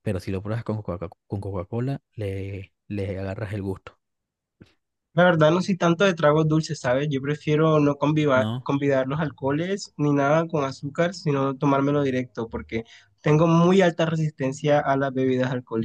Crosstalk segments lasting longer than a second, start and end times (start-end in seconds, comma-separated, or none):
none